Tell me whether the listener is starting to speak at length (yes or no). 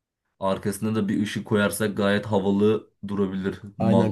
yes